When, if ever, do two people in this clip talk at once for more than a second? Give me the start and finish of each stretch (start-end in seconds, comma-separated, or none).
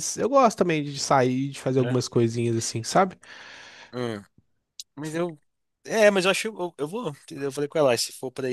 none